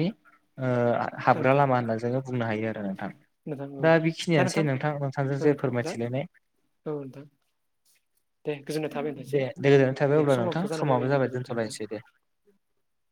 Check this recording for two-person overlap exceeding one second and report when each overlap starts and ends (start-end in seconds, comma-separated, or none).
10.2-11.8